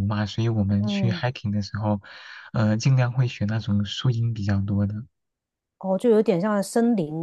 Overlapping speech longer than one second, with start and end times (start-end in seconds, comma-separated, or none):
none